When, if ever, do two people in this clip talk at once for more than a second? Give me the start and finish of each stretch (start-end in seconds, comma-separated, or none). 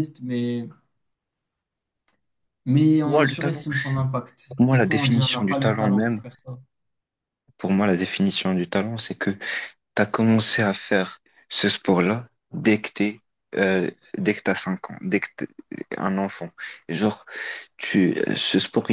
4.5-6.2